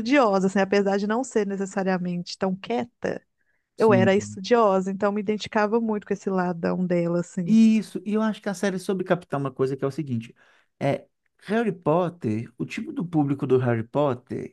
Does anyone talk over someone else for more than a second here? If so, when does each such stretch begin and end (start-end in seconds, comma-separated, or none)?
none